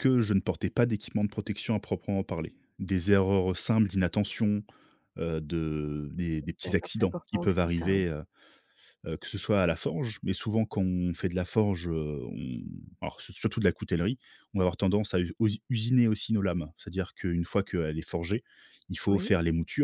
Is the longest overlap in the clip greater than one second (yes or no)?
yes